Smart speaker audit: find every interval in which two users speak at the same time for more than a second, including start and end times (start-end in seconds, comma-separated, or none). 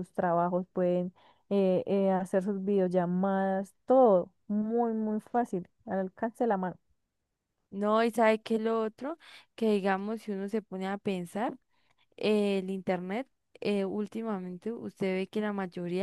none